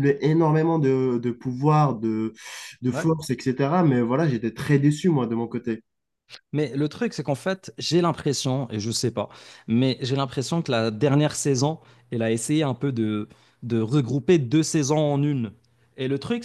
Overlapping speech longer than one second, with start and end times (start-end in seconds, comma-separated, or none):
none